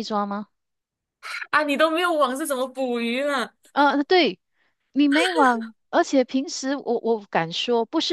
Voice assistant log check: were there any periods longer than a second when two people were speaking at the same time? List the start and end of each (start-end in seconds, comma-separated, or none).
none